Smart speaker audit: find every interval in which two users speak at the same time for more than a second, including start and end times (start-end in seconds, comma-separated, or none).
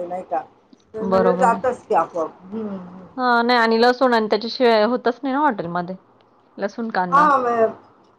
none